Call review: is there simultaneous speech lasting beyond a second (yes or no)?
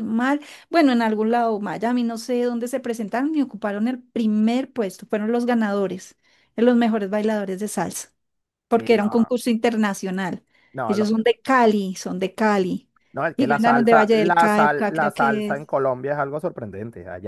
yes